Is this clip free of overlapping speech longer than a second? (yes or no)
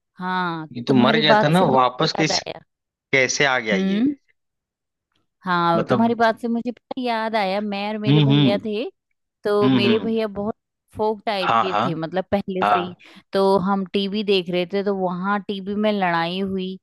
no